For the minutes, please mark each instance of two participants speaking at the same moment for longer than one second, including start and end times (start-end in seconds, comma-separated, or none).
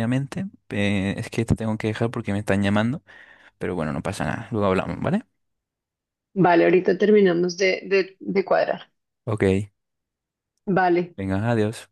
none